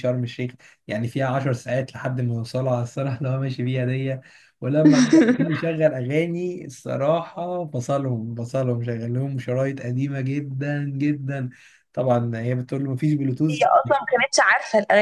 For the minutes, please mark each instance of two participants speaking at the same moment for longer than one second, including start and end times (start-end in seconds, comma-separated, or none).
none